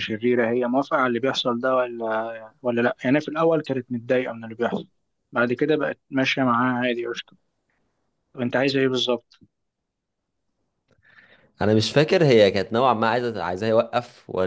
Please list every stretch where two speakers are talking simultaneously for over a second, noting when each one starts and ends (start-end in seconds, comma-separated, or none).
none